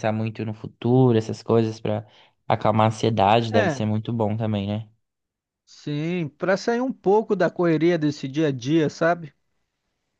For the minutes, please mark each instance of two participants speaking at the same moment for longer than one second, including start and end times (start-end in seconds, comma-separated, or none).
none